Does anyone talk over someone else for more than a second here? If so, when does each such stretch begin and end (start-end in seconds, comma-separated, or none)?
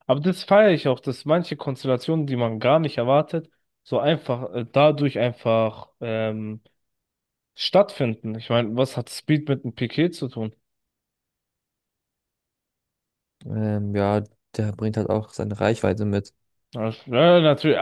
none